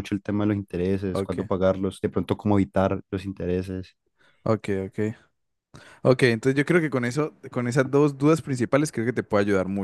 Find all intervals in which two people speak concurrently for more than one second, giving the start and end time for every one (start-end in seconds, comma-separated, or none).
none